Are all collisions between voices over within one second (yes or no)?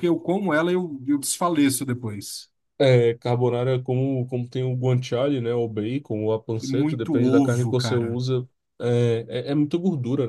no